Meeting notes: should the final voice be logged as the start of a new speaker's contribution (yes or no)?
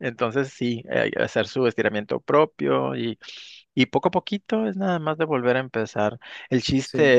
no